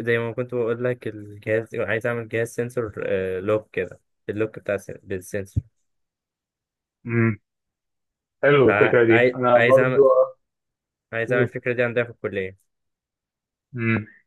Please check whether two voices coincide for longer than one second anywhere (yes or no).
yes